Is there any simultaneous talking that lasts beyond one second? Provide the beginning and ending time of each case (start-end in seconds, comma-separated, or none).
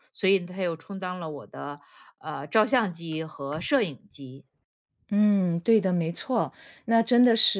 none